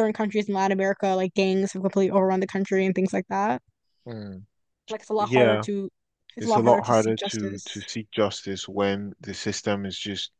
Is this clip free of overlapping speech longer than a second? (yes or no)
no